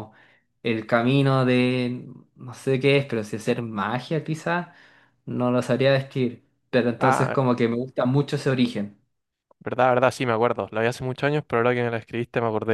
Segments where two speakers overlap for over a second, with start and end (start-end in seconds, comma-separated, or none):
none